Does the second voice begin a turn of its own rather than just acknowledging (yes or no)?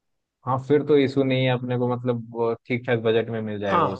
yes